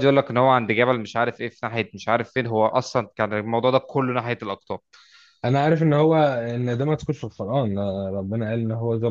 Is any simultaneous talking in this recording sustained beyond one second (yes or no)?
no